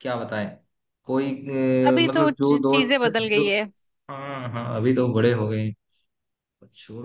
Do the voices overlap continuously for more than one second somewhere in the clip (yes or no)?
yes